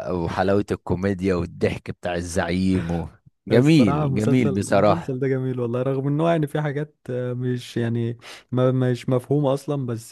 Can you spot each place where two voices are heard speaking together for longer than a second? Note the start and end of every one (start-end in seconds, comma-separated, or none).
3.5-5.2